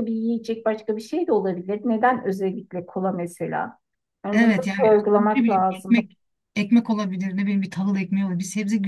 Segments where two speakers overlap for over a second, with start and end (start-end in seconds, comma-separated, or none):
4.3-6.1